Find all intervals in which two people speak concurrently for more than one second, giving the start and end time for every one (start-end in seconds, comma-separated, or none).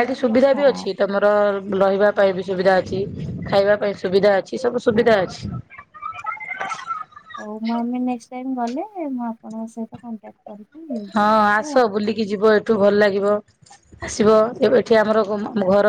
none